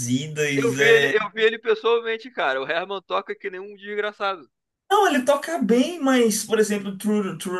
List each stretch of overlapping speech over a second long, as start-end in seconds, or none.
none